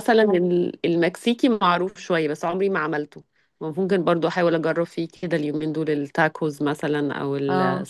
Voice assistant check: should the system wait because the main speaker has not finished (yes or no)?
yes